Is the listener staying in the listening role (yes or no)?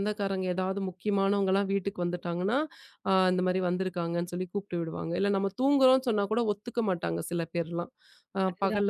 yes